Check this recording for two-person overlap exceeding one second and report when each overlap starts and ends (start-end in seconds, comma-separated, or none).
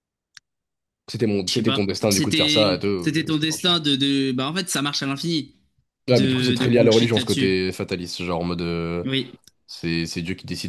1.5-3.1, 6.1-7.6